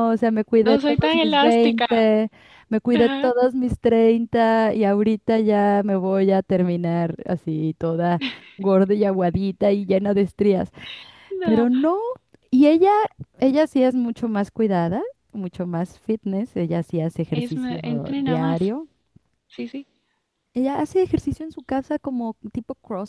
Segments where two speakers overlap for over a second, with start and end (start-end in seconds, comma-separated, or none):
0.6-1.9, 17.3-18.7